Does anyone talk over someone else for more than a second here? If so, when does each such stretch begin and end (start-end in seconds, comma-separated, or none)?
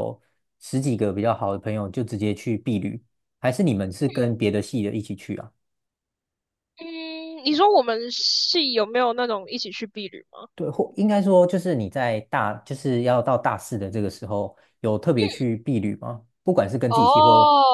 none